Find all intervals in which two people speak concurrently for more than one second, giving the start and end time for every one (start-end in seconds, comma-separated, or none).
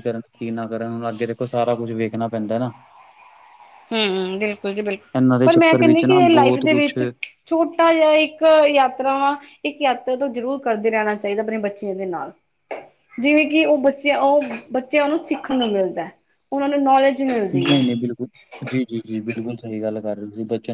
5.4-7.0